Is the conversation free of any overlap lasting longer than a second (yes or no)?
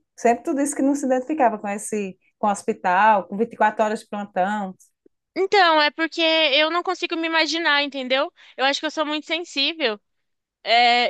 yes